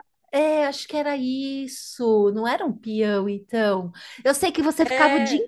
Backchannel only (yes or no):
yes